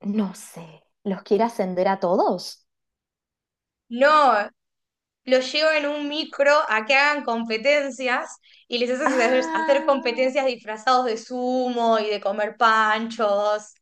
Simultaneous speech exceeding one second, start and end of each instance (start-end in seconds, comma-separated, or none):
9.1-10.3